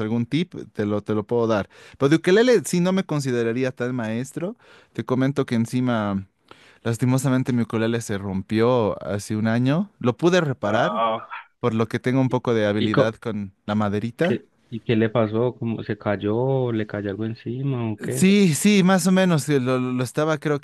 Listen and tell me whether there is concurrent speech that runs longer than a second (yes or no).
no